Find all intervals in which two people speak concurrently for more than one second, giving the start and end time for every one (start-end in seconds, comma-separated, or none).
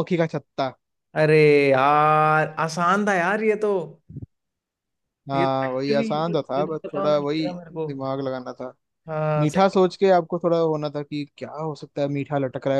5.3-7.5